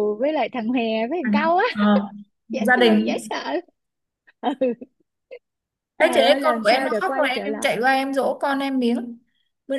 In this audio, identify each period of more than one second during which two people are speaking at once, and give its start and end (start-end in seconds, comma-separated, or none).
6.0-7.7